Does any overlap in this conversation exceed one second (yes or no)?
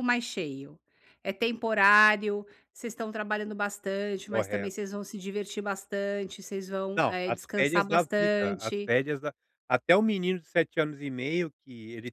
yes